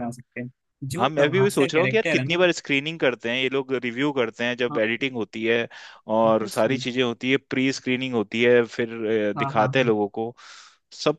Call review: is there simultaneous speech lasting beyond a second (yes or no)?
yes